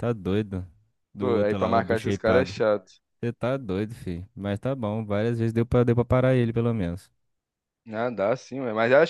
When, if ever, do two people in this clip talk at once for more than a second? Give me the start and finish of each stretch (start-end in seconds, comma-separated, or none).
1.2-2.6